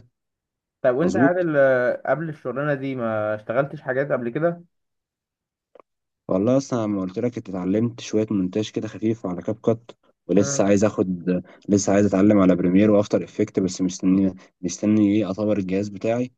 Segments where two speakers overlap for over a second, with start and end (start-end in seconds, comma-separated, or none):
none